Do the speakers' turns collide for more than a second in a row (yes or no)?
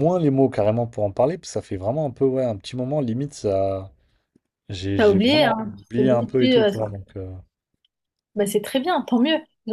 yes